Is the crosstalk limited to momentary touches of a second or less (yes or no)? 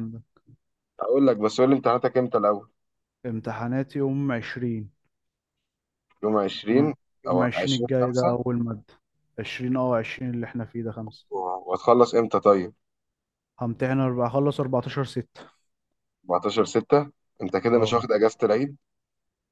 no